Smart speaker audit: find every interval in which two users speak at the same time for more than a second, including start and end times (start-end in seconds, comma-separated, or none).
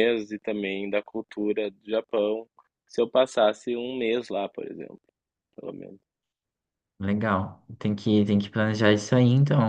none